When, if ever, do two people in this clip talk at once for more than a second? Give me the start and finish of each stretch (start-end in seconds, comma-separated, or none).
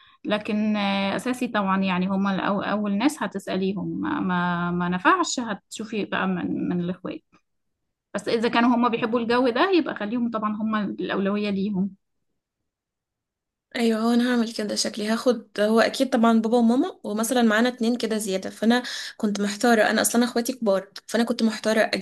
none